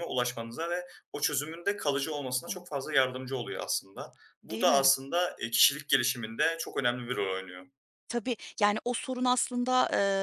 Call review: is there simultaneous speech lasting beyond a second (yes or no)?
no